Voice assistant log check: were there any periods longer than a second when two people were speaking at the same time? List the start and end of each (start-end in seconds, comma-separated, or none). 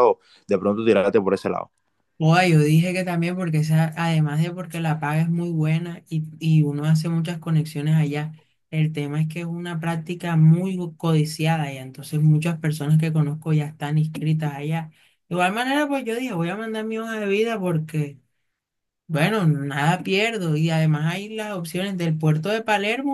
none